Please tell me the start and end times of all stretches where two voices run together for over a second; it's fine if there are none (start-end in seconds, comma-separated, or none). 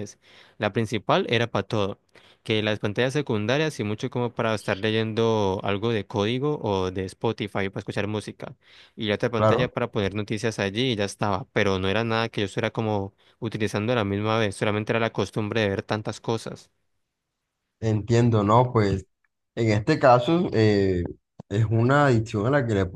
none